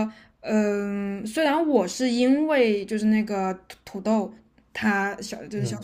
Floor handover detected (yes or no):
no